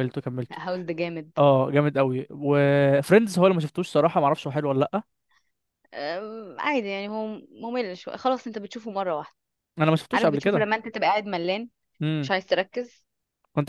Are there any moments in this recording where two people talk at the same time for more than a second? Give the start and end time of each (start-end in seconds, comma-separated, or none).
none